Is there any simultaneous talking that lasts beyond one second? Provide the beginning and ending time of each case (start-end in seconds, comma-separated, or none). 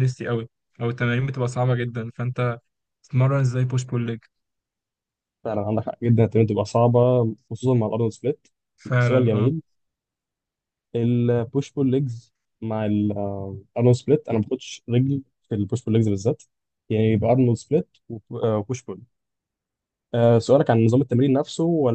none